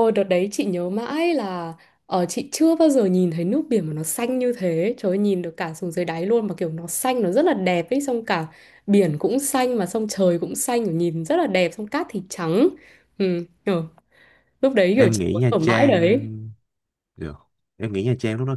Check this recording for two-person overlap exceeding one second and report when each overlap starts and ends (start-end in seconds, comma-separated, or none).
14.9-16.3